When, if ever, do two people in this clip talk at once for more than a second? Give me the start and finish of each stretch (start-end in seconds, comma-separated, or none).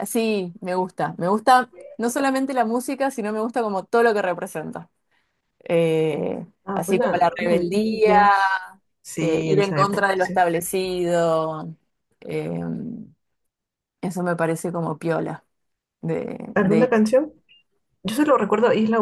6.6-8.2, 9.2-10.4